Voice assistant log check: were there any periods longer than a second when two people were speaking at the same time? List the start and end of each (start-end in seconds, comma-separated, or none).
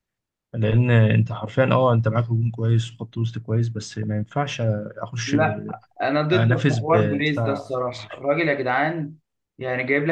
6.3-8.2